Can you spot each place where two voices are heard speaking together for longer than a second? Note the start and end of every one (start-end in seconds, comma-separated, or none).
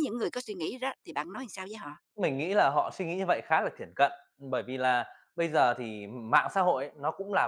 none